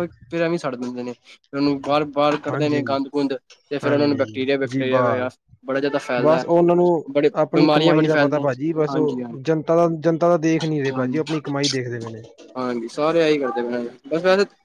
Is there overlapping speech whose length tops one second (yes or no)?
yes